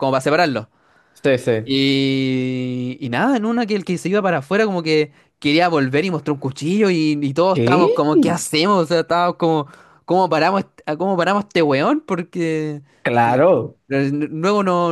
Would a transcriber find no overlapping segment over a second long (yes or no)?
yes